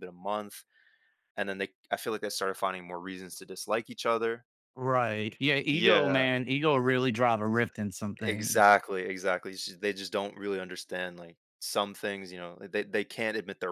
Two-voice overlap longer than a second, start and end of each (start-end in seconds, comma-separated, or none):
none